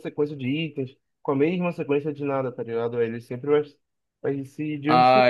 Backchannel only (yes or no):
no